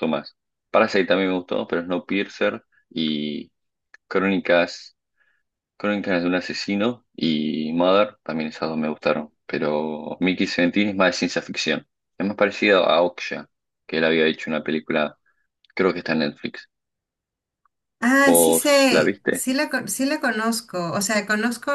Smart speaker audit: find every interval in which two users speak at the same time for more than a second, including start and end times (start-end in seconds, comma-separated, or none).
18.2-19.5